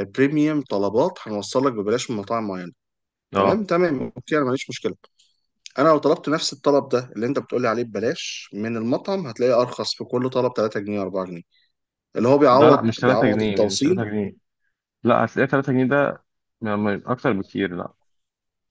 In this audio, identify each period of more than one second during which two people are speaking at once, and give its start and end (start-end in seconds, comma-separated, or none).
12.5-14.1